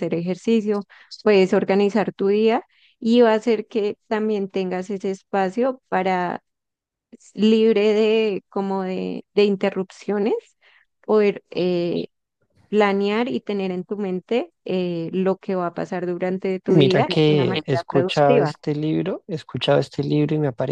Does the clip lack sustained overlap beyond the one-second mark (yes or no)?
no